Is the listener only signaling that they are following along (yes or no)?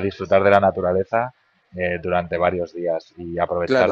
no